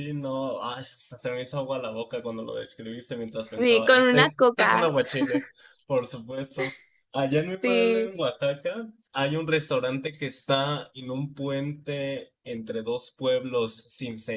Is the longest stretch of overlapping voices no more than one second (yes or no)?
no